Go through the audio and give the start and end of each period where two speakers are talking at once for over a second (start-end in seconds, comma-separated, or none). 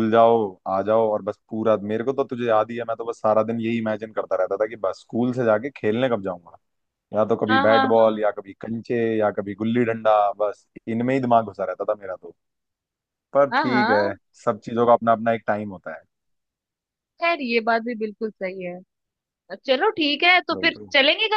none